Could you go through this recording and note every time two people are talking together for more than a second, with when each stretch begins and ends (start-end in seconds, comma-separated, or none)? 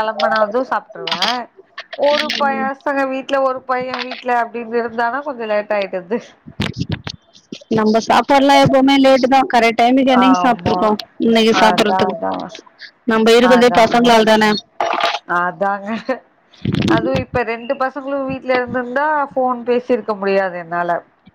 none